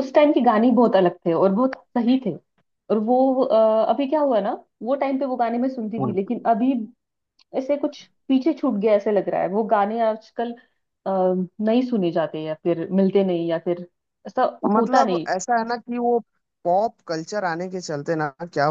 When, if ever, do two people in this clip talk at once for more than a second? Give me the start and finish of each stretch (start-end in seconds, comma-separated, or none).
none